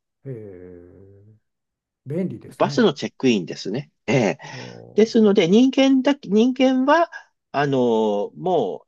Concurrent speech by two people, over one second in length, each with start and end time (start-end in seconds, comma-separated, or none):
none